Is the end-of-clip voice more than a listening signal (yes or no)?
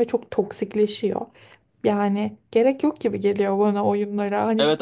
yes